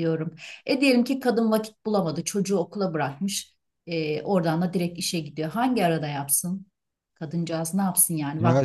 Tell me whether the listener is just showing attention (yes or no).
no